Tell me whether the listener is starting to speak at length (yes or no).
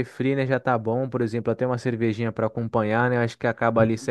no